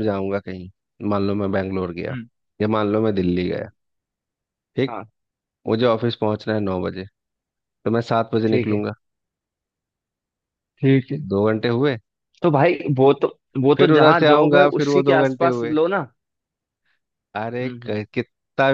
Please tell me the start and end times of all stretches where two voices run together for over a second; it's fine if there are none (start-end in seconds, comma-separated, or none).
13.8-15.7